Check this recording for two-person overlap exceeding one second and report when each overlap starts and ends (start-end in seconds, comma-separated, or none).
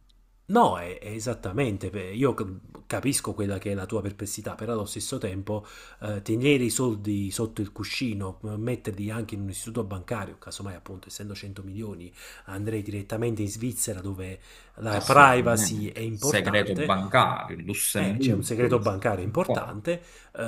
14.9-16.9, 18.0-19.8